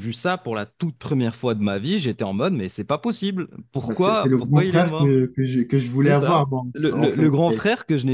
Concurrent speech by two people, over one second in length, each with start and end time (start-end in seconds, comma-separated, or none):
3.8-5.2, 6.0-7.6